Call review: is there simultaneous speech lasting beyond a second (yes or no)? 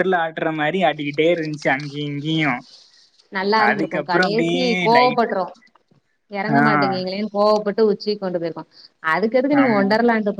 yes